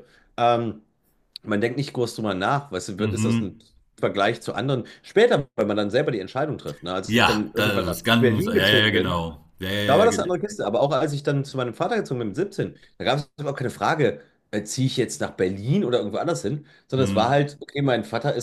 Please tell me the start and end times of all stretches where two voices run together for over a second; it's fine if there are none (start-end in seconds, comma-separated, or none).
7.1-9.3